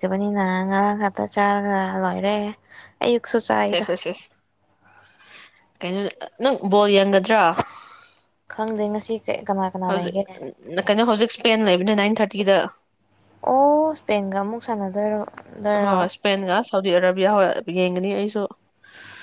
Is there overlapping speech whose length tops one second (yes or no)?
no